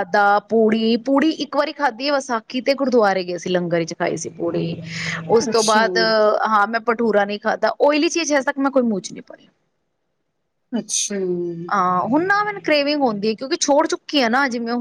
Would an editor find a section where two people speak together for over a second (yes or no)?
no